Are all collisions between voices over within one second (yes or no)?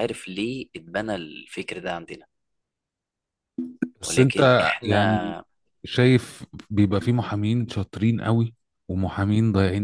no